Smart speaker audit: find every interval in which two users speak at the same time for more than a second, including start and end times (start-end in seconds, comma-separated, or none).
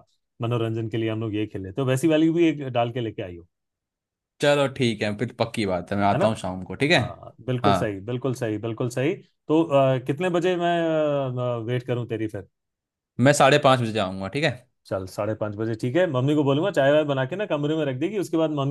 none